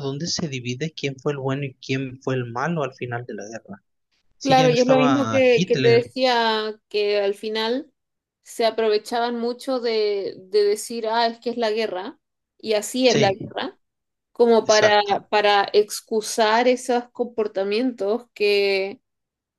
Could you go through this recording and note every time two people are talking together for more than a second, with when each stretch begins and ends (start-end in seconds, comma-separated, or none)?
4.4-6.0